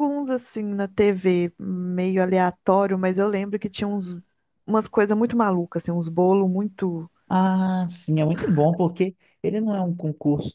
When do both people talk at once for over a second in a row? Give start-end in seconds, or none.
none